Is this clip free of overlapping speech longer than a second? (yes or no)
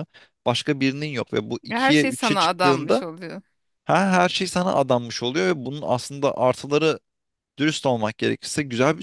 no